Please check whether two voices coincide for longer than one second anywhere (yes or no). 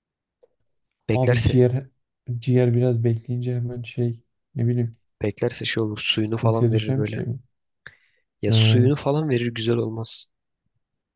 yes